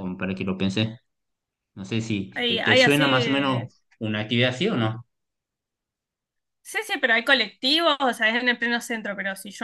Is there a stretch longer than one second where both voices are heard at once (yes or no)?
yes